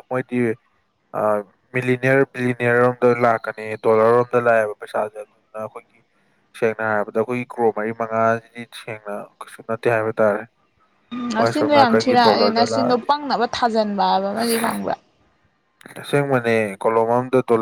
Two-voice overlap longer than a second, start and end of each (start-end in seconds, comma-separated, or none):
11.4-13.1